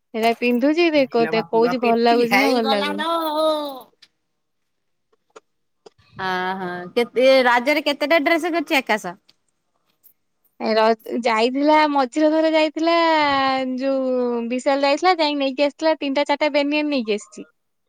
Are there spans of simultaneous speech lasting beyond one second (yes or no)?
yes